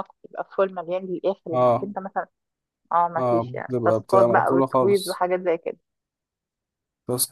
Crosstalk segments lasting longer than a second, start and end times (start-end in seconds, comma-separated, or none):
3.2-5.2